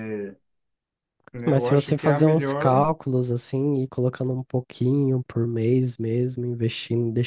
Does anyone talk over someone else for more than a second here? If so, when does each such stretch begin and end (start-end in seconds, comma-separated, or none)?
1.4-2.9